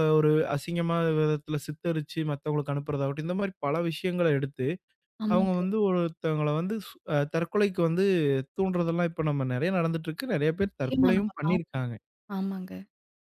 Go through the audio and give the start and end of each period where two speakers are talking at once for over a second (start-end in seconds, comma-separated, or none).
10.6-11.9